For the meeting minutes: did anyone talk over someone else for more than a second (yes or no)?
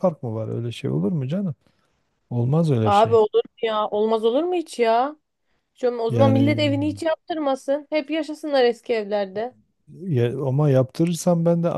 no